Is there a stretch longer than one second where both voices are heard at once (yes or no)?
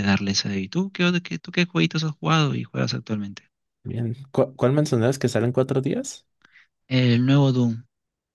no